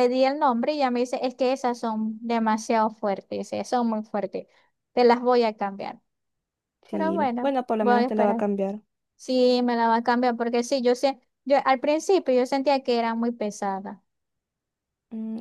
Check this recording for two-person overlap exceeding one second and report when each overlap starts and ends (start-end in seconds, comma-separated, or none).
6.9-8.4